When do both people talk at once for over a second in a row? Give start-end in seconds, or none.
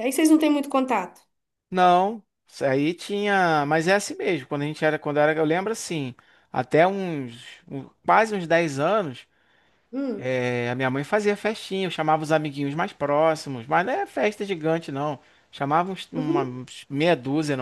none